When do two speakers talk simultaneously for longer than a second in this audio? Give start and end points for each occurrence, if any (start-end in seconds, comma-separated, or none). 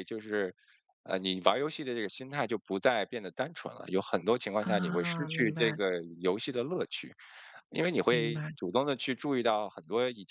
4.6-5.8